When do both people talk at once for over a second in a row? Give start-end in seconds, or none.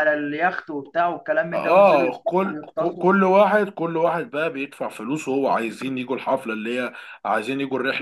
1.5-3.1